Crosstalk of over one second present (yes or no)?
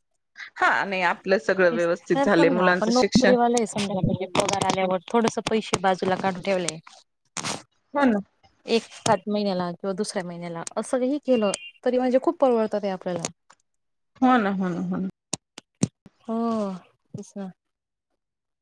yes